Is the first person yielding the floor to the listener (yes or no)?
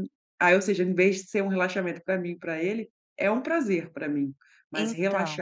no